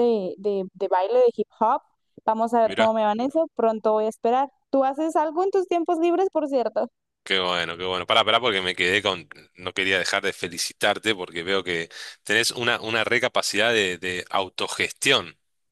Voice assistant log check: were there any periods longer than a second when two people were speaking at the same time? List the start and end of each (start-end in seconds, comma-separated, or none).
none